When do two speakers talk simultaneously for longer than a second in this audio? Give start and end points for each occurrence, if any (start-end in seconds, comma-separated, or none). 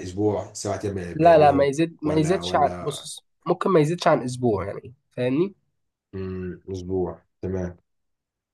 1.1-3.1